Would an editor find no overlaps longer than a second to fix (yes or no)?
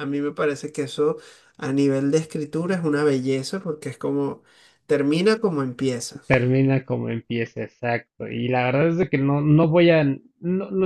yes